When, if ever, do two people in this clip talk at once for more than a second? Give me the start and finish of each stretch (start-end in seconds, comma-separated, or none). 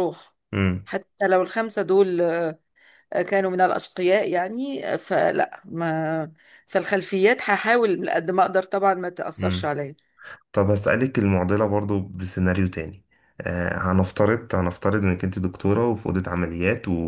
none